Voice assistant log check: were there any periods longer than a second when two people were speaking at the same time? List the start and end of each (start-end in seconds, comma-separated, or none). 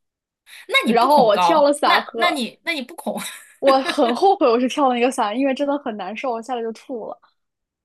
0.8-2.4